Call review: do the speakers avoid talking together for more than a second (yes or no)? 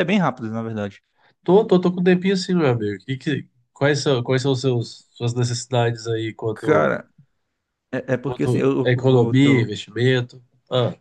no